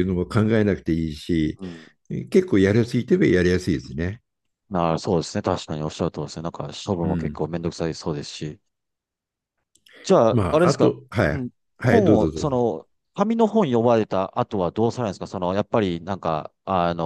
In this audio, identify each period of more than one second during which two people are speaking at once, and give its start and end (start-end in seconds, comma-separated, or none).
10.3-12.6